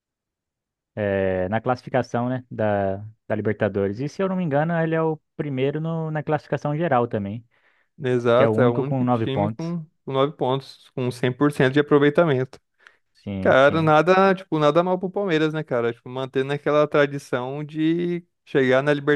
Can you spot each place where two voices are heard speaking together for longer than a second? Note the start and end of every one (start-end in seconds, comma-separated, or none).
8.3-9.7